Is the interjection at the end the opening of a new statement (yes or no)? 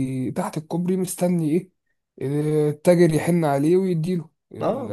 yes